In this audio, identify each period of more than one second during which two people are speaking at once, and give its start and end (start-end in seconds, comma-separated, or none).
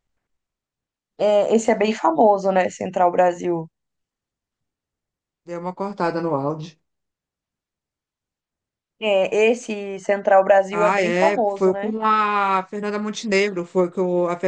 10.7-11.9